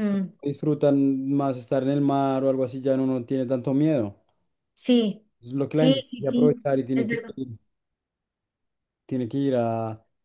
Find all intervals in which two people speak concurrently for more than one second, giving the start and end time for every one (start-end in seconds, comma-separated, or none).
5.7-7.3